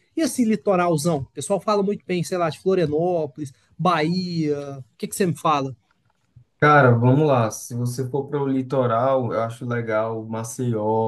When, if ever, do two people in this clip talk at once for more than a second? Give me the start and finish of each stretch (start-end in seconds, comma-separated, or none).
none